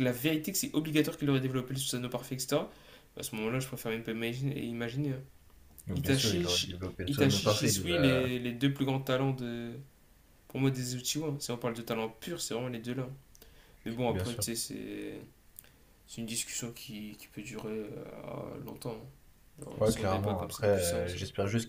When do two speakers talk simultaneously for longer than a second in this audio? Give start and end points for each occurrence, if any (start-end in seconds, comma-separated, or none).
5.9-8.3, 19.8-21.2